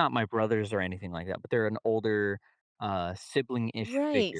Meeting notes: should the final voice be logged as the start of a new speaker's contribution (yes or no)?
yes